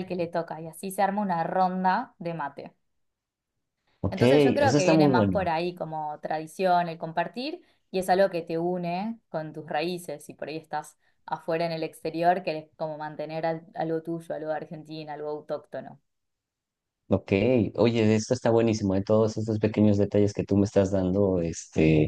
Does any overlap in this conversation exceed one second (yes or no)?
yes